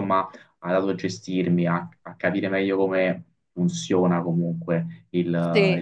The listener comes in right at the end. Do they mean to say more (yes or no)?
no